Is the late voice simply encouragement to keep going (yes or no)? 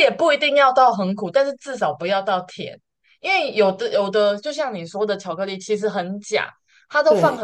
yes